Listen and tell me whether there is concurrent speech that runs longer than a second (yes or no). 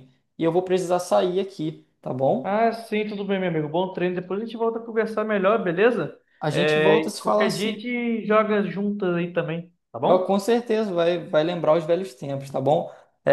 yes